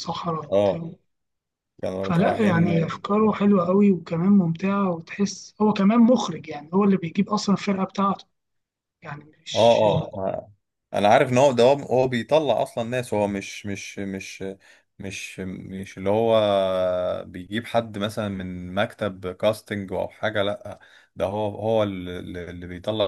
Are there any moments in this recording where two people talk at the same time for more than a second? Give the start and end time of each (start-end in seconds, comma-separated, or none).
2.0-3.3